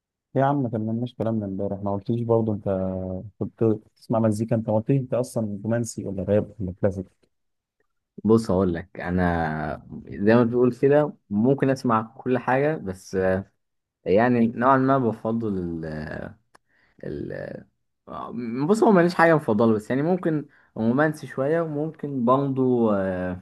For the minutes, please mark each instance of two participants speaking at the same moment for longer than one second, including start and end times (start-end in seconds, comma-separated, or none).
none